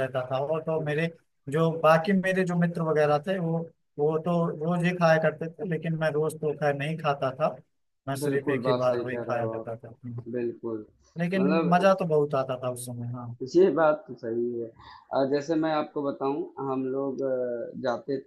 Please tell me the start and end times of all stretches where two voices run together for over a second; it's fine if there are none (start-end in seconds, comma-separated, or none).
8.2-9.9